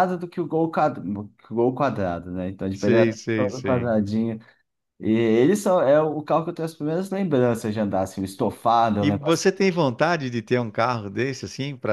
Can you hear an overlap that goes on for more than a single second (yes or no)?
yes